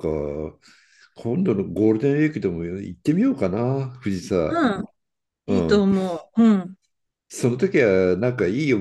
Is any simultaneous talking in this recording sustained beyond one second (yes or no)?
no